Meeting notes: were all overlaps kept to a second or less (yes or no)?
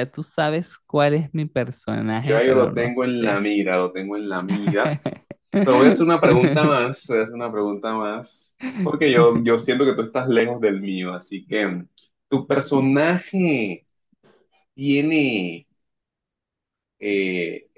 no